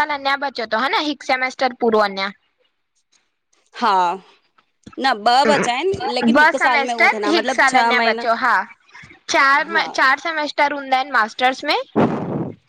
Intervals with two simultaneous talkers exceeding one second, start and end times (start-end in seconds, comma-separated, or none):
6.1-8.3